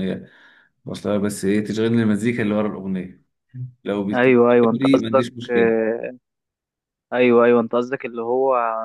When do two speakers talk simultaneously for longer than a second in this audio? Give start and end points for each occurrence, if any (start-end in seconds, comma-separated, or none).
4.1-5.8